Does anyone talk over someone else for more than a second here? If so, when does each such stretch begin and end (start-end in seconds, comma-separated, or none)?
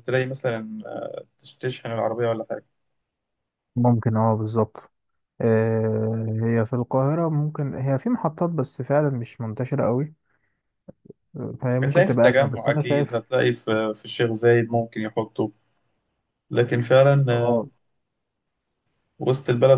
11.8-13.2